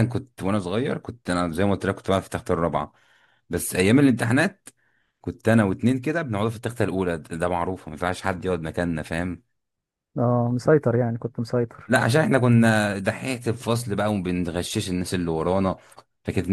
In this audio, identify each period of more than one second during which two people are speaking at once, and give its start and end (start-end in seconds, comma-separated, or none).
none